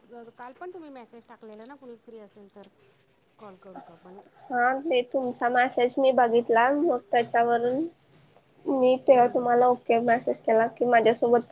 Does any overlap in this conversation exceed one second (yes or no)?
no